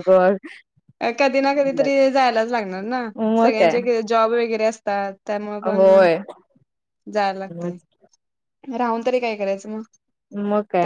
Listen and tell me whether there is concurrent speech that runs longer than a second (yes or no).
no